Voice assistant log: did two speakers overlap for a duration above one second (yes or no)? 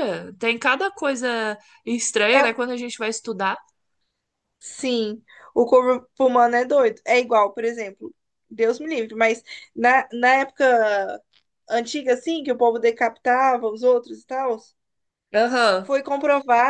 no